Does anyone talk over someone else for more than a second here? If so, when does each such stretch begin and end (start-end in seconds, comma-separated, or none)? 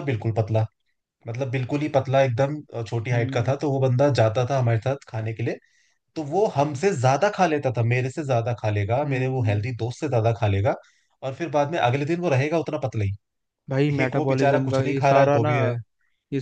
14.0-15.5